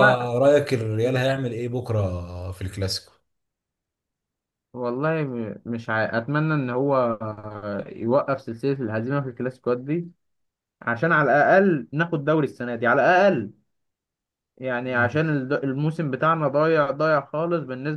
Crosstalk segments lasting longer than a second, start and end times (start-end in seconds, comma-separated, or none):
none